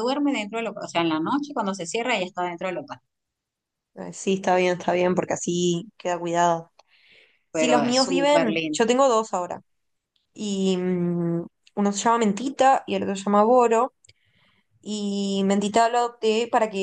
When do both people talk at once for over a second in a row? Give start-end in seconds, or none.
7.5-8.8